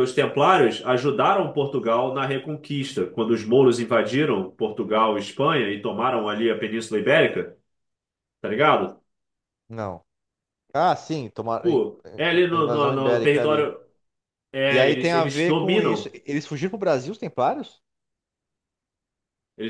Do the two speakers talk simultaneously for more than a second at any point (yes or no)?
yes